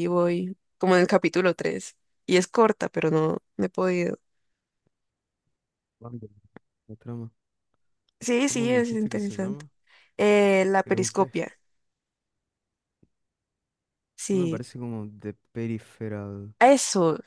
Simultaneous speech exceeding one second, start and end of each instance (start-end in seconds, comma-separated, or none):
8.4-9.7